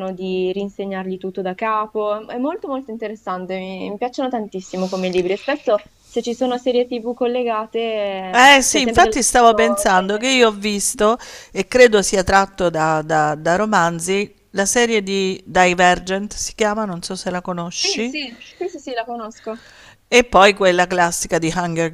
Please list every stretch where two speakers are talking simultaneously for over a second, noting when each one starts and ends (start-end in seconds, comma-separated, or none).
8.3-10.3